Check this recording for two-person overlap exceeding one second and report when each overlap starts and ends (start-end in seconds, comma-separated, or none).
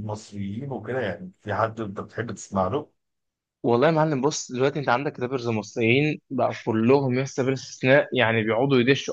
none